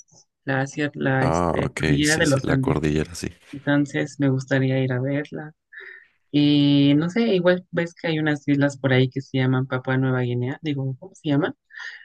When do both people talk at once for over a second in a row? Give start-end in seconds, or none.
1.2-2.8